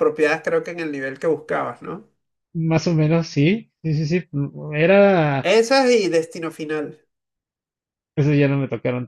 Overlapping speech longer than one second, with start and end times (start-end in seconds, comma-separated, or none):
none